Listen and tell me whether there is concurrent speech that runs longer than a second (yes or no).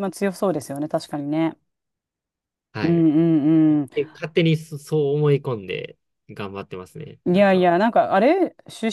no